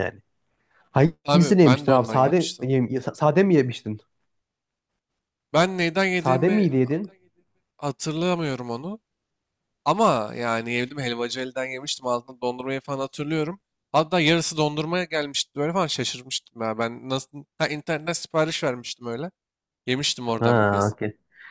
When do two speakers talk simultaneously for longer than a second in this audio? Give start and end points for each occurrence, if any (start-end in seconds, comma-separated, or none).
1.2-2.7